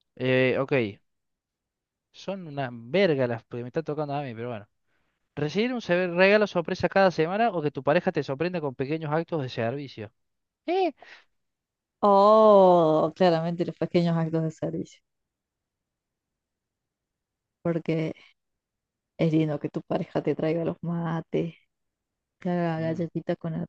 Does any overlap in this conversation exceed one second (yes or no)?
no